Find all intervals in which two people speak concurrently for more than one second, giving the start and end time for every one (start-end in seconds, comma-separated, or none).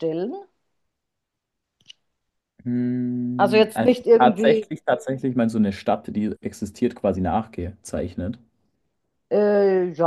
3.4-4.7